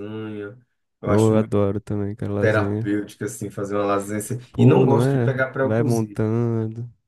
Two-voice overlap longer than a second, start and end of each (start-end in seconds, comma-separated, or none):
4.5-6.2